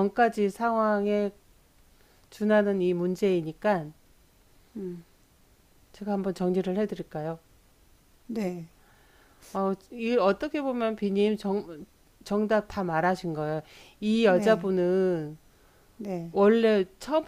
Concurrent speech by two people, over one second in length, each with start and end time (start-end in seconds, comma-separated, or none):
none